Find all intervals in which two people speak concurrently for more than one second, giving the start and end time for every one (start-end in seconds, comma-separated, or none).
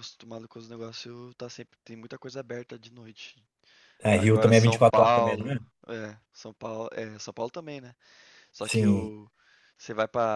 4.1-5.6